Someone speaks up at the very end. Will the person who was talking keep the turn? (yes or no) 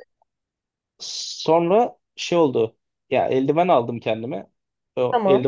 yes